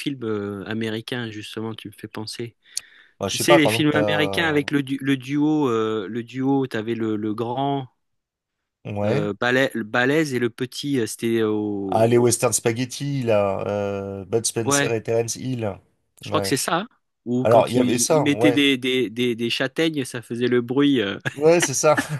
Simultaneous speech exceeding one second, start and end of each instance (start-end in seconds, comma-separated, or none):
3.3-4.6, 17.4-18.6